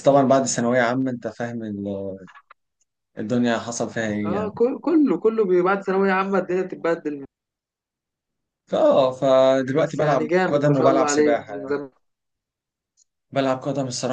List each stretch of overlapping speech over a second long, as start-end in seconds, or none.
9.8-11.7